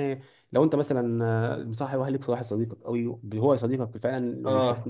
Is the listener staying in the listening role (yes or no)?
yes